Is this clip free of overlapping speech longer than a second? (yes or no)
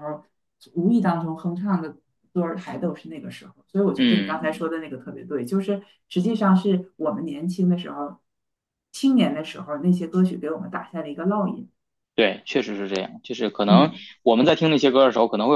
yes